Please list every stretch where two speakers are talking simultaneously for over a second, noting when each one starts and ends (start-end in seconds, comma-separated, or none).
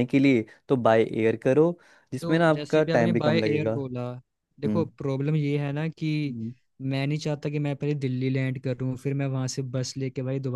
2.2-3.8